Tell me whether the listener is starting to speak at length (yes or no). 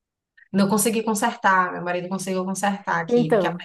yes